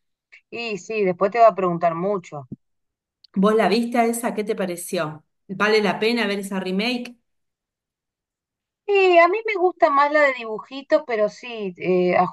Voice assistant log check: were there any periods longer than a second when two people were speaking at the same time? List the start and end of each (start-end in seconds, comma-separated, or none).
none